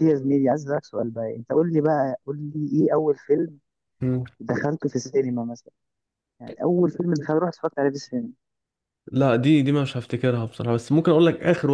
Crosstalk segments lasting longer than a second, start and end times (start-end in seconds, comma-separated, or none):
none